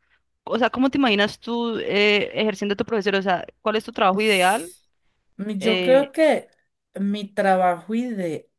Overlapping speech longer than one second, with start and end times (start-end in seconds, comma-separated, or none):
none